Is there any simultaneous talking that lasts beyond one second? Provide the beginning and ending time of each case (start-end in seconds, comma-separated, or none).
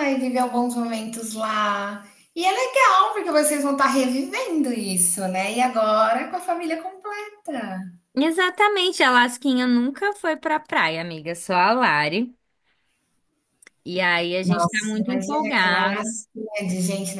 14.4-16.0